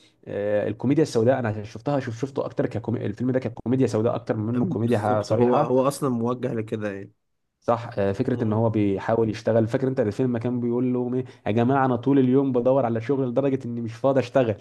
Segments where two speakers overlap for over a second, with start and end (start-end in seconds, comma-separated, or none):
4.5-5.7